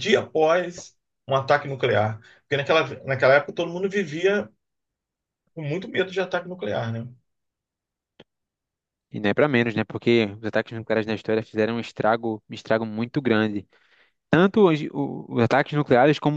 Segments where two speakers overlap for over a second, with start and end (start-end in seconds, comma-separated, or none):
none